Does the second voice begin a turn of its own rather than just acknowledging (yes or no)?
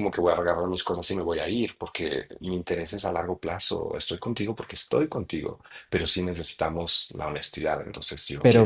yes